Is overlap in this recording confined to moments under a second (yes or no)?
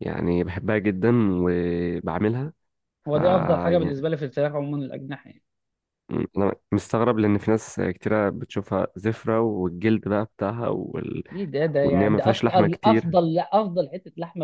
no